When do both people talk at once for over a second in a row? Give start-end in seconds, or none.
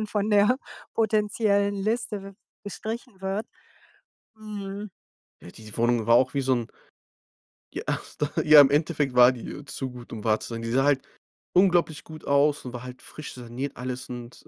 none